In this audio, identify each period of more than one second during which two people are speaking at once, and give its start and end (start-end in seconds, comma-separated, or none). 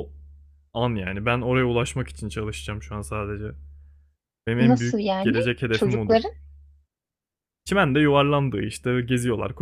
4.6-6.2